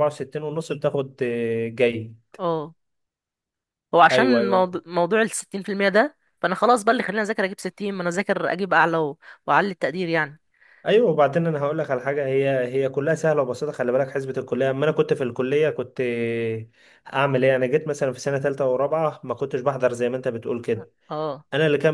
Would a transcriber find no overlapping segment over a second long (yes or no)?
yes